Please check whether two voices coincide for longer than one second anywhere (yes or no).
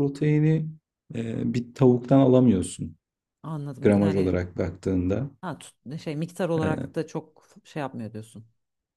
no